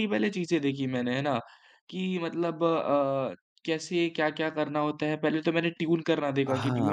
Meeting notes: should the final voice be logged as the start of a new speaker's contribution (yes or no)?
yes